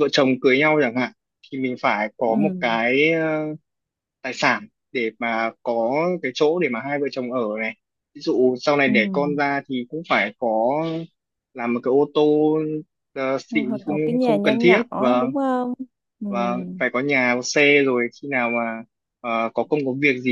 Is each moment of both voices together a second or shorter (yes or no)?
no